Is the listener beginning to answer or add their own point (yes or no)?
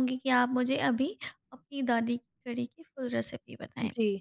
yes